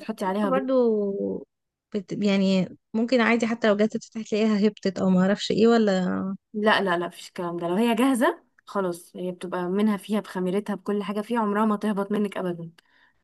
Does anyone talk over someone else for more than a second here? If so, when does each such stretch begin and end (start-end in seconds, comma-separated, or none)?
none